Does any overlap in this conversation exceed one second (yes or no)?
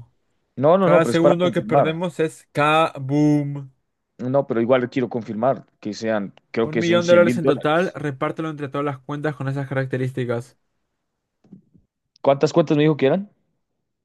yes